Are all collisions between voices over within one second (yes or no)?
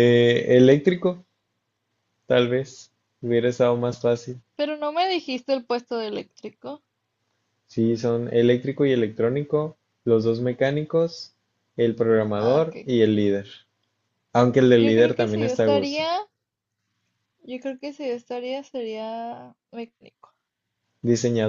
no